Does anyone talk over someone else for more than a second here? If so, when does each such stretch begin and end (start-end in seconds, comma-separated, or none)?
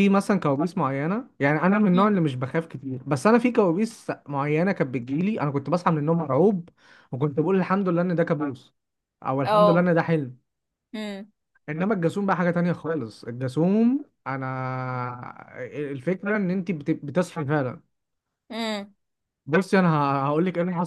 none